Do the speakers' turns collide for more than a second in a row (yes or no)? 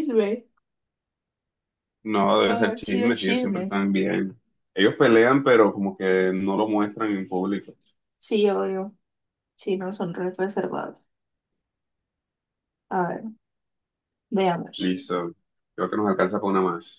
yes